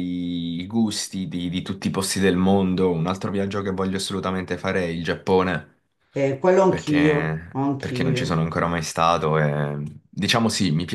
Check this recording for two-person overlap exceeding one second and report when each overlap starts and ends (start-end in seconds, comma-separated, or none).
6.7-8.5